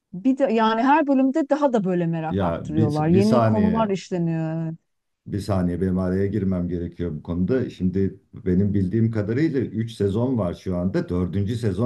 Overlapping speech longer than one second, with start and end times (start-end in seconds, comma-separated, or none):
2.3-4.0